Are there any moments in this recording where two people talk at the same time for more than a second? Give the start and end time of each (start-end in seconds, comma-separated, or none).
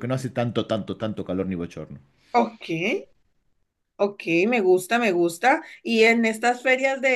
none